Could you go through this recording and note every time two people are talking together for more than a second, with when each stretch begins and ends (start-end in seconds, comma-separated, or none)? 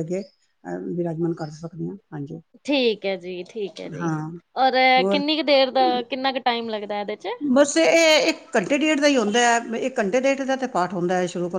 none